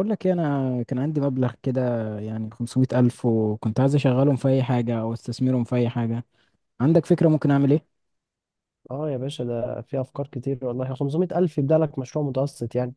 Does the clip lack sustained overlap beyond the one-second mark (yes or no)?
yes